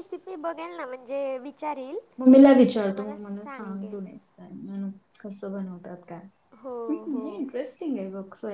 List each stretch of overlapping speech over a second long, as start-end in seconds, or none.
2.7-4.0